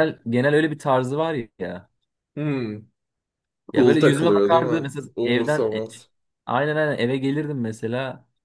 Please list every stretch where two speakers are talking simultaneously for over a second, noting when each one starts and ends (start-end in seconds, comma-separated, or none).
3.7-5.8